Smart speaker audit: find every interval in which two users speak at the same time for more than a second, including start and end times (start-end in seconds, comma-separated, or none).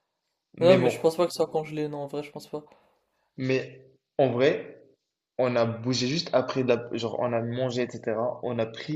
none